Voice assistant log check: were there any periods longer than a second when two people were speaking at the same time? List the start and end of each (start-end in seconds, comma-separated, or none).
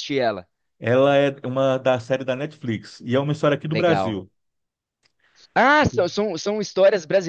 none